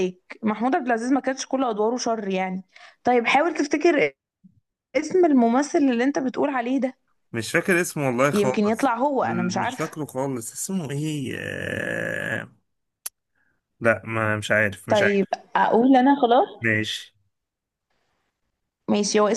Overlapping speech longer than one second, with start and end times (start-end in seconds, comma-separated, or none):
8.3-10.0